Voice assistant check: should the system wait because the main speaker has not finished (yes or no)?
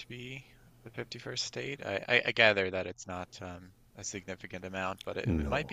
yes